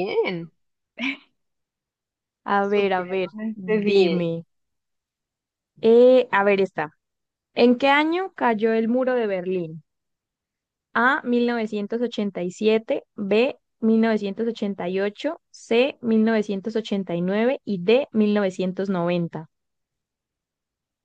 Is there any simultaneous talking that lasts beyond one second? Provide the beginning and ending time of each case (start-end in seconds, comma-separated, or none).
2.6-4.3